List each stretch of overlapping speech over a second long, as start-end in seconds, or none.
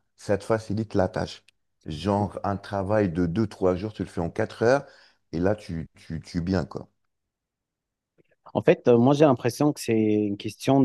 none